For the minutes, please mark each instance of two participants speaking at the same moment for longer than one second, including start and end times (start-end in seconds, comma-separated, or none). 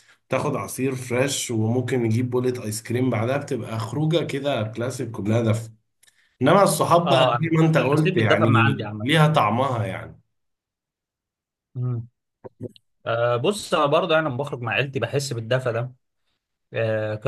7.0-9.1